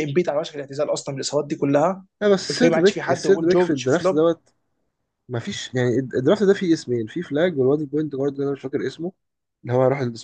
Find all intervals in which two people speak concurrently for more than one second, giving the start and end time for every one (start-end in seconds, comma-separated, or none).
2.5-4.3